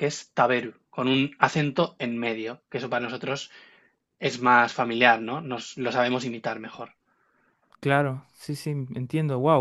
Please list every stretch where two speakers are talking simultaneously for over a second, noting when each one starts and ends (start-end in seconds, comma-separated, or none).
none